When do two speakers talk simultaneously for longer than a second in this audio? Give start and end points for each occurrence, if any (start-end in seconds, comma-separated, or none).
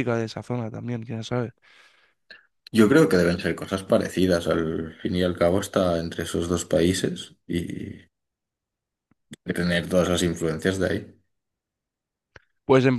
none